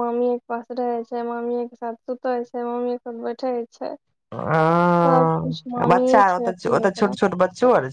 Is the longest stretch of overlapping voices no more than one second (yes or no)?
no